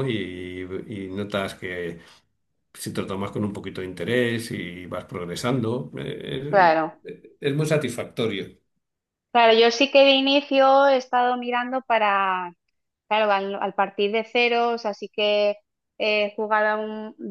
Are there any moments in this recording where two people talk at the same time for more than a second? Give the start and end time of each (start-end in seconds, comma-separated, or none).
none